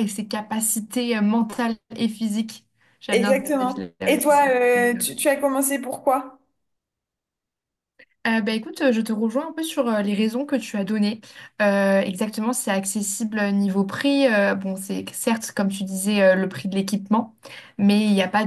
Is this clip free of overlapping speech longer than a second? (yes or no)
no